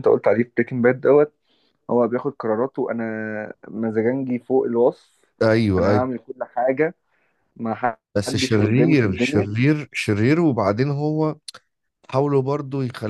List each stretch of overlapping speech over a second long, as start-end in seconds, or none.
8.2-9.5